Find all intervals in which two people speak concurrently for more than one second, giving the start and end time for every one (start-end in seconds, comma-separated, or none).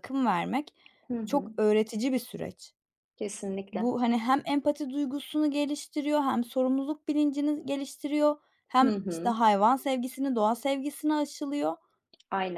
none